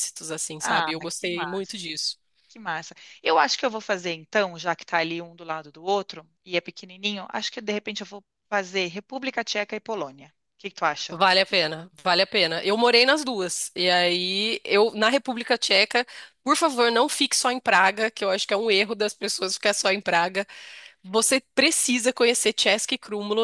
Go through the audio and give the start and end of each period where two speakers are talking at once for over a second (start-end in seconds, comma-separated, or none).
0.6-1.9